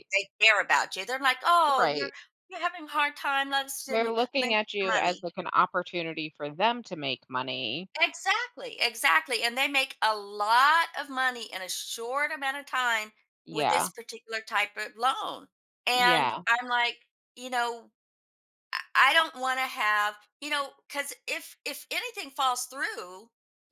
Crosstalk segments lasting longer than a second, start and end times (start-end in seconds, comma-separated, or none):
3.9-5.3